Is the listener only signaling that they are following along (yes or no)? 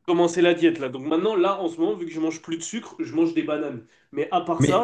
yes